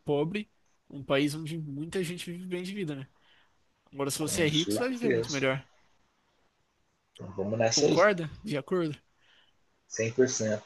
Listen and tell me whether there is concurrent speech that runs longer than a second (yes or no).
yes